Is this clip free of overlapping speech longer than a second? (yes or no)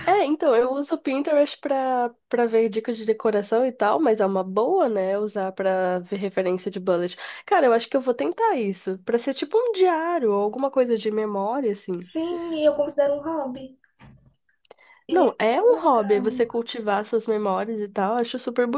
no